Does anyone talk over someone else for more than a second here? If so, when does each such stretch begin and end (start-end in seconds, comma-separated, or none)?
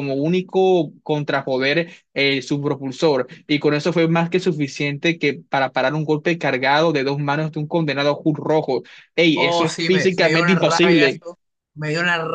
9.3-11.2